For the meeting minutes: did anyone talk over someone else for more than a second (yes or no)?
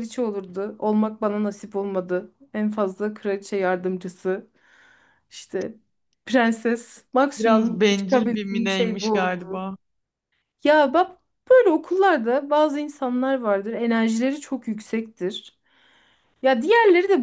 yes